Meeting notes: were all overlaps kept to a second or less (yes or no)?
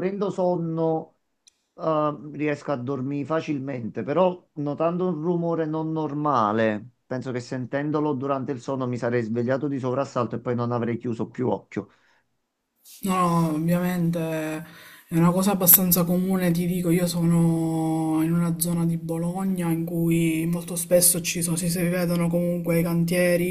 yes